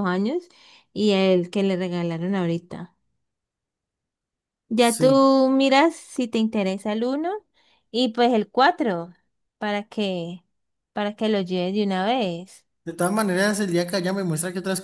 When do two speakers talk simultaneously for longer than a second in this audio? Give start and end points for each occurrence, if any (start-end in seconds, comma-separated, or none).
none